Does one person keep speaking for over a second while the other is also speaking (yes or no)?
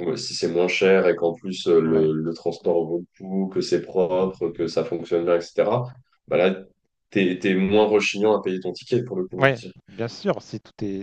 no